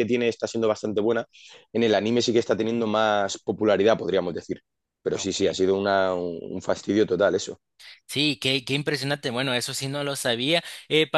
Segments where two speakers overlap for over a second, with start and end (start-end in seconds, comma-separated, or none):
none